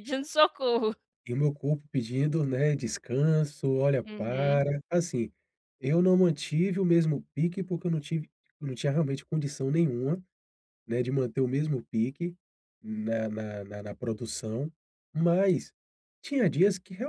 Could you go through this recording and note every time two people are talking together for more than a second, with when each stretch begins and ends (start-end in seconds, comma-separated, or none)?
none